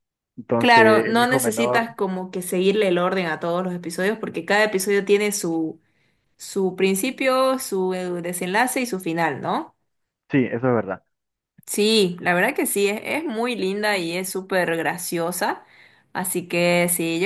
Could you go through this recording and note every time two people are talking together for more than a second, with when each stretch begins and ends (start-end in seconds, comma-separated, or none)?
0.6-1.9